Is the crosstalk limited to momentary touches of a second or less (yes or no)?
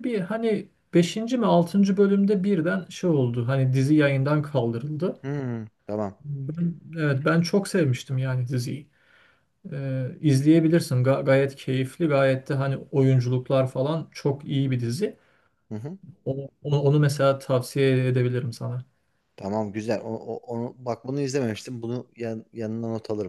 yes